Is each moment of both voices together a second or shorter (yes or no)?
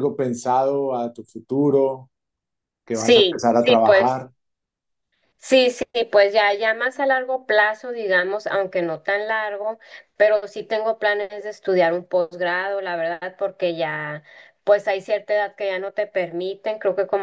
no